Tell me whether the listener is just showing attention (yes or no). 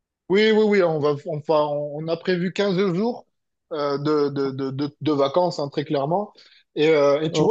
yes